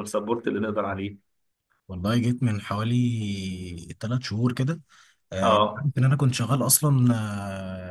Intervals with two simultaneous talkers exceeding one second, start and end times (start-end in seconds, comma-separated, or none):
none